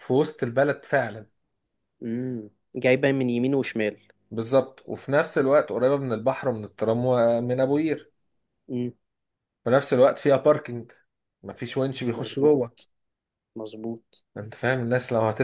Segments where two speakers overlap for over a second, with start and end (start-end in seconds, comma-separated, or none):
none